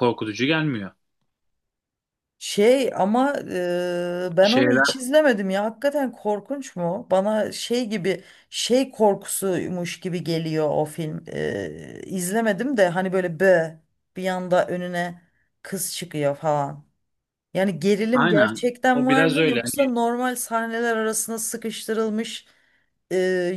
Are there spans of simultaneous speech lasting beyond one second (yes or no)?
yes